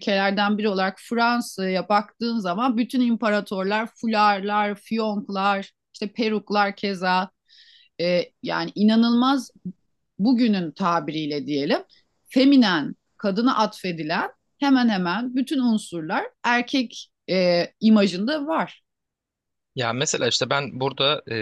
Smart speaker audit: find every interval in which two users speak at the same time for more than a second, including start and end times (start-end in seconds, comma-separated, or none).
none